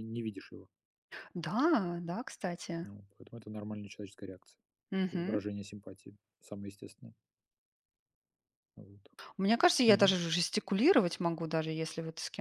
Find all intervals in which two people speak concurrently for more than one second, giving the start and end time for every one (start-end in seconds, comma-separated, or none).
none